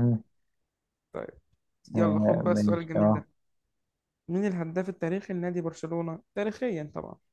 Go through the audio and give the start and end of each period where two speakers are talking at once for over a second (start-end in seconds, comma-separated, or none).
1.9-3.2